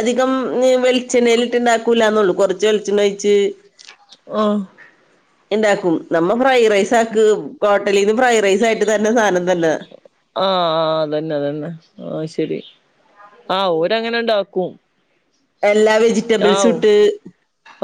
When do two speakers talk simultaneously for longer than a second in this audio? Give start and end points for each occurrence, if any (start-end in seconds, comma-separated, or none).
none